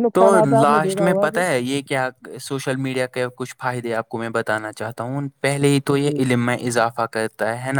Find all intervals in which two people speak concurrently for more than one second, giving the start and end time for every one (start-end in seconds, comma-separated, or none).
none